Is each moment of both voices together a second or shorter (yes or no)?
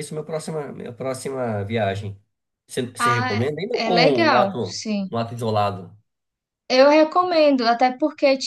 no